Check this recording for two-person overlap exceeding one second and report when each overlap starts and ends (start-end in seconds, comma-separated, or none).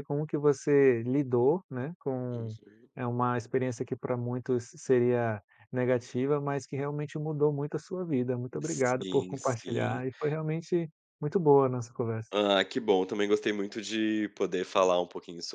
8.6-10.0